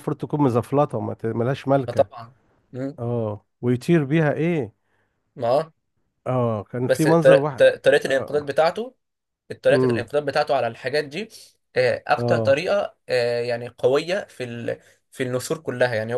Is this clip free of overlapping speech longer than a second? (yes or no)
no